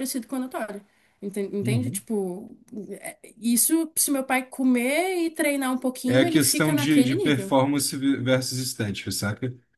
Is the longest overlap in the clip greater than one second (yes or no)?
yes